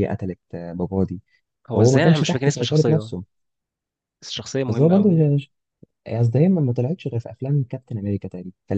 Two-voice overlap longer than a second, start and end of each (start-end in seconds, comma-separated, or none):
1.8-3.1